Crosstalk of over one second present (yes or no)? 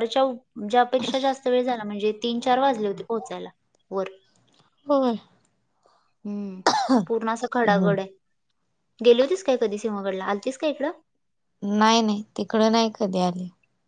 no